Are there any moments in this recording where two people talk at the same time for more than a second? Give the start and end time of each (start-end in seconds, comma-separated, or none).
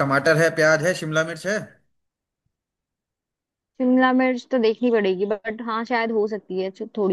none